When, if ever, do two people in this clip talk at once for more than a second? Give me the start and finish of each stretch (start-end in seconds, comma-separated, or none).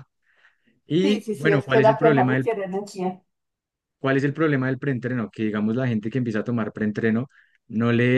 1.0-2.5